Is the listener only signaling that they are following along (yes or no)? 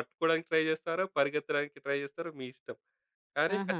yes